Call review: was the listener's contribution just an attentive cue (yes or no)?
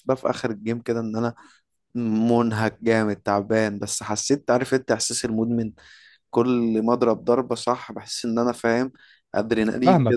no